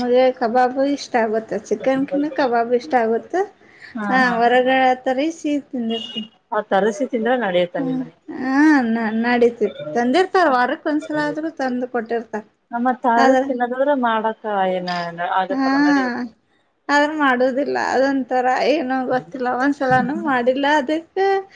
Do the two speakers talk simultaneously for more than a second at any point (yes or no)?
no